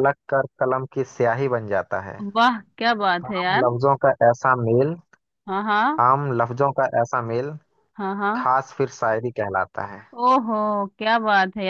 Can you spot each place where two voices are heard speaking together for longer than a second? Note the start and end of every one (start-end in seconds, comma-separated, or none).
none